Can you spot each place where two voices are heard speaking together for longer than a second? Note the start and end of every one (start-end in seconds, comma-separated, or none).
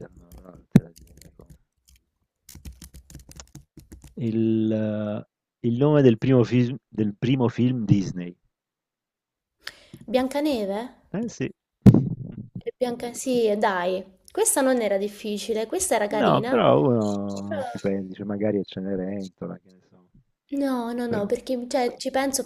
none